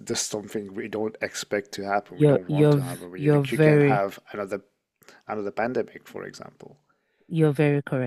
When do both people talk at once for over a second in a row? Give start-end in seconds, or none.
2.1-4.1